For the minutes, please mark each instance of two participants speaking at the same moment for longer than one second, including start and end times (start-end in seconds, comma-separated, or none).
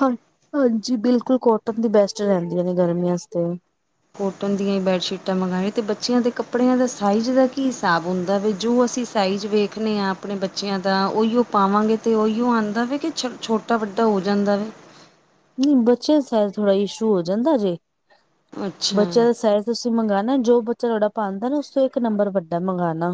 none